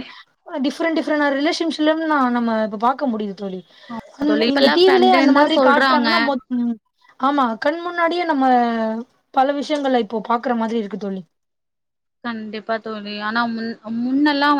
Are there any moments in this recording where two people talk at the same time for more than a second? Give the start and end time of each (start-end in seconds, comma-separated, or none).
4.3-6.1